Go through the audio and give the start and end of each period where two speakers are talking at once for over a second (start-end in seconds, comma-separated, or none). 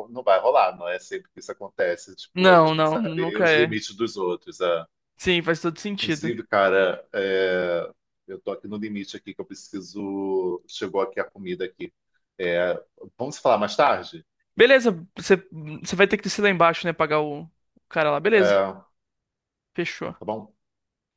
2.3-3.8